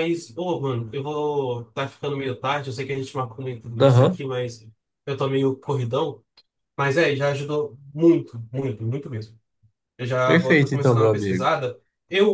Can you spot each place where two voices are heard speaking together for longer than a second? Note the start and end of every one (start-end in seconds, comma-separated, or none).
10.2-11.5